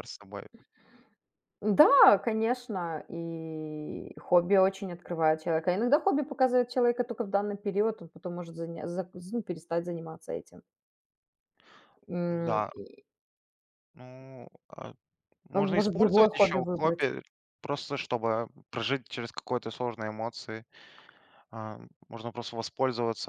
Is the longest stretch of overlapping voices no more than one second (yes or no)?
no